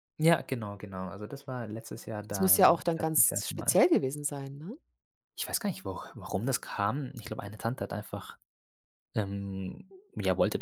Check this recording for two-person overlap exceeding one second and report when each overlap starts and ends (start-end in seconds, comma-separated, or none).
2.3-3.8